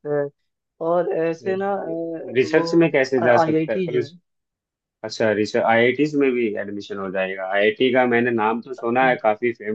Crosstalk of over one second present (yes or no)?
yes